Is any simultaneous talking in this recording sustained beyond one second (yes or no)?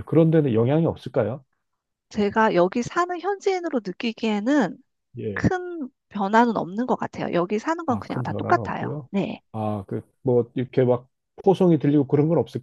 yes